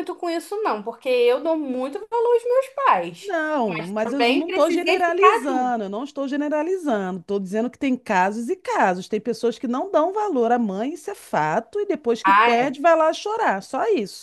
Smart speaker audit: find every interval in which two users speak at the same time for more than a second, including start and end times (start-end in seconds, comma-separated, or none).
3.2-5.7